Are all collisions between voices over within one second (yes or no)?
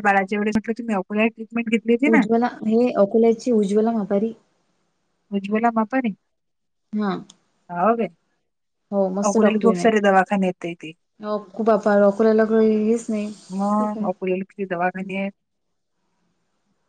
no